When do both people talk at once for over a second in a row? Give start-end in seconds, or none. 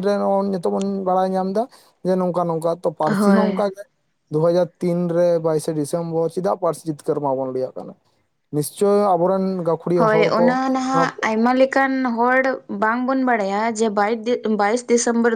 none